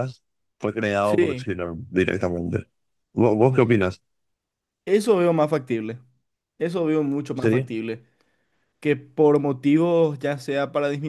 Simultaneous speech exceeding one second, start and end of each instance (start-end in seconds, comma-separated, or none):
none